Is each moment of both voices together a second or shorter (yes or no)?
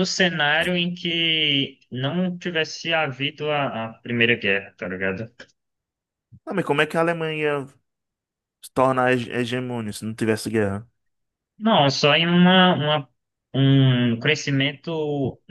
yes